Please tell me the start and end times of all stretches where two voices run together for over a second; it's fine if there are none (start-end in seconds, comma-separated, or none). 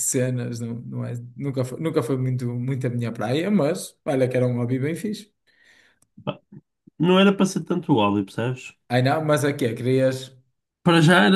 none